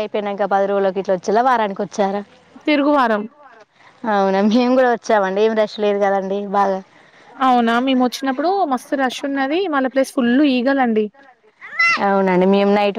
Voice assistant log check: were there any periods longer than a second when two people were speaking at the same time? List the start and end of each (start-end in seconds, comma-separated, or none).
none